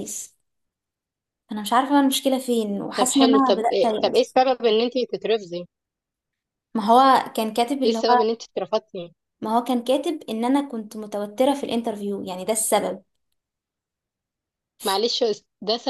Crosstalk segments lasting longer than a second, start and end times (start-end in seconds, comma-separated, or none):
3.0-4.4